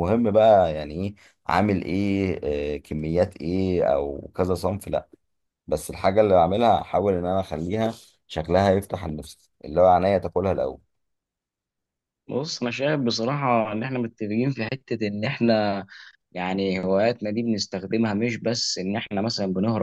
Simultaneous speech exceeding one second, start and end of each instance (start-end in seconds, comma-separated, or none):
none